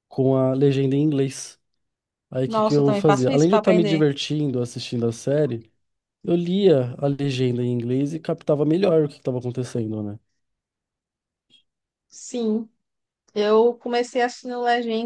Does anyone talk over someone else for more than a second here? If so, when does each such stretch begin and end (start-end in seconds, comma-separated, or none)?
2.5-4.0